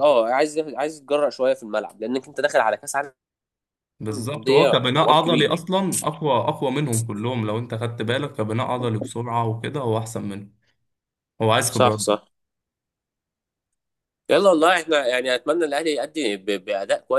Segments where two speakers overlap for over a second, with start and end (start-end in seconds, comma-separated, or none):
4.1-5.6